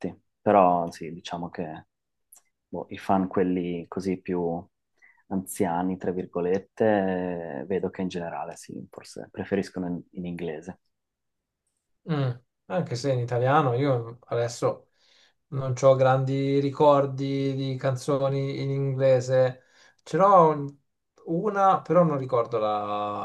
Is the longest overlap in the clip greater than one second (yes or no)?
no